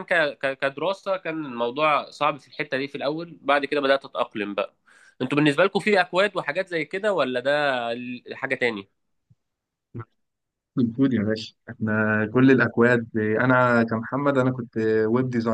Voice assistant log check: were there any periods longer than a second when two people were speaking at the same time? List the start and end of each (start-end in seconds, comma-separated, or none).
none